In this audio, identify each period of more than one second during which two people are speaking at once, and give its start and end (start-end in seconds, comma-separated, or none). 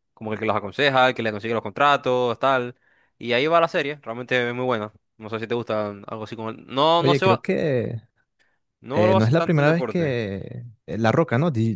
8.9-10.2